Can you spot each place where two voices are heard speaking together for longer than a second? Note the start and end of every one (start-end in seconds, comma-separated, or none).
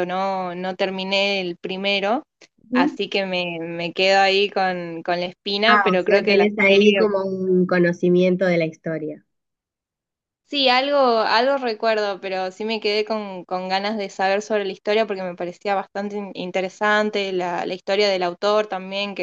5.7-7.0